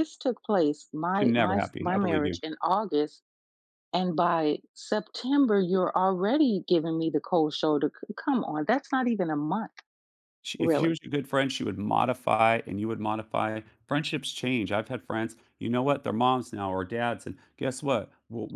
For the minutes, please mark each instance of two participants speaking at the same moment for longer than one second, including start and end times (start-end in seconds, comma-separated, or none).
1.1-2.4